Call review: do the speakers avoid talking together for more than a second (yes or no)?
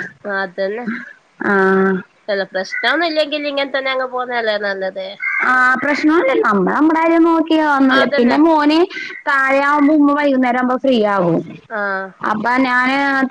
yes